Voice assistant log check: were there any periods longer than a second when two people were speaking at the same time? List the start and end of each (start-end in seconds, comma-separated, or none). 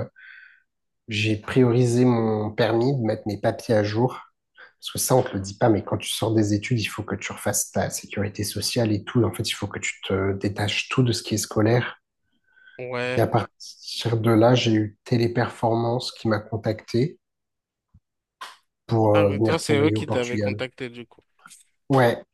19.1-20.6